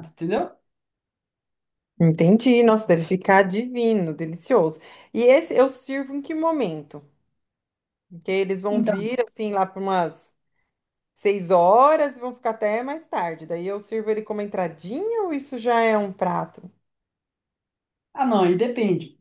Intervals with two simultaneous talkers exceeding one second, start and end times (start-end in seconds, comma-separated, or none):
none